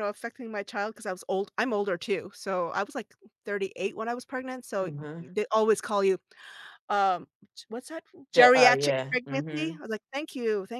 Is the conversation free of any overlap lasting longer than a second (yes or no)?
no